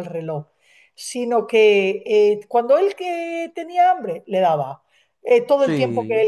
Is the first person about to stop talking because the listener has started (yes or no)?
no